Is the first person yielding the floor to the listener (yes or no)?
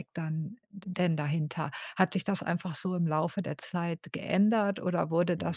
no